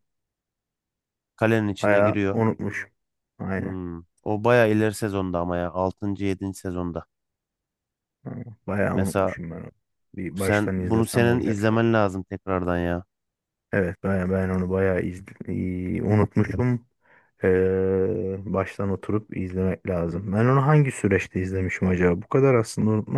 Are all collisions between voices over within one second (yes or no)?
no